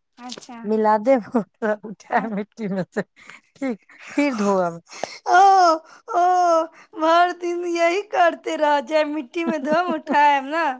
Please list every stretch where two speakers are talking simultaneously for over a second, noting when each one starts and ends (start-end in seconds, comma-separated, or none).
none